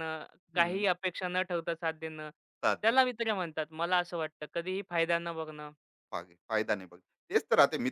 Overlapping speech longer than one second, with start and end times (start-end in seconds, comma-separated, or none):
none